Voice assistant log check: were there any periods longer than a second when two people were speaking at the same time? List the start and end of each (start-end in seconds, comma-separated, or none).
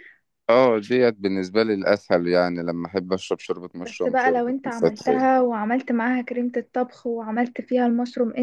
3.8-5.3